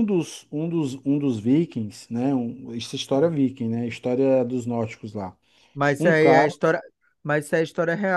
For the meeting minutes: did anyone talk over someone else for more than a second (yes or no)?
no